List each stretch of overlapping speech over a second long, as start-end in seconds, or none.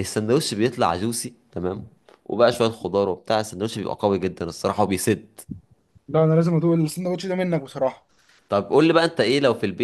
none